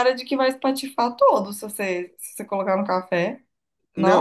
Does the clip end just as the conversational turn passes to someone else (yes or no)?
yes